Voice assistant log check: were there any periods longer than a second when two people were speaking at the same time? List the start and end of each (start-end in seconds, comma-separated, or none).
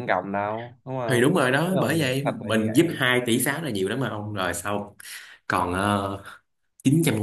1.1-3.0